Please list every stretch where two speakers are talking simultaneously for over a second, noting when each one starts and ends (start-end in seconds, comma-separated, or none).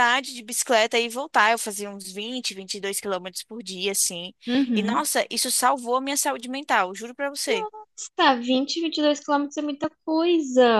none